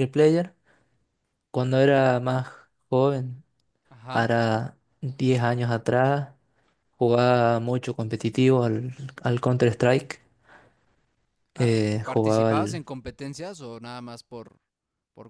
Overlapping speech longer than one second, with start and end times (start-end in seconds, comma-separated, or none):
11.5-12.8